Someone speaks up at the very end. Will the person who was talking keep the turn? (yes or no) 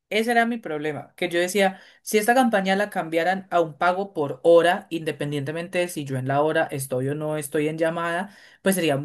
yes